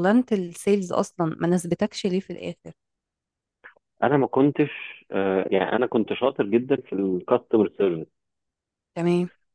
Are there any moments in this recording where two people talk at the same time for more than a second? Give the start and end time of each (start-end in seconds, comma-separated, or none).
none